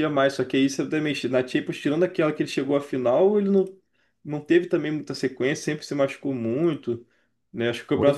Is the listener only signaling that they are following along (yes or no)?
yes